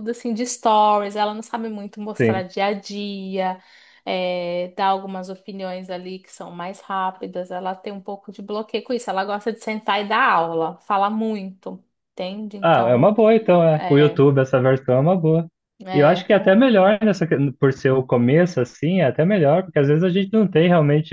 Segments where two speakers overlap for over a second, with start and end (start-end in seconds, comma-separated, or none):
none